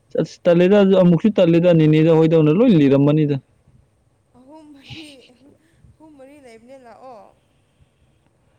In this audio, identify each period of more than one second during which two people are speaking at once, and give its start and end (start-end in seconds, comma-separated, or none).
none